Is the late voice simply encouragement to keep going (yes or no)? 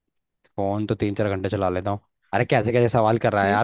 yes